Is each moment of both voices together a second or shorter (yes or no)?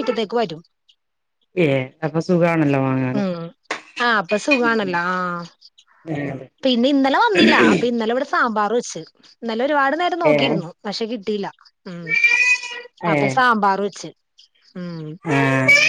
yes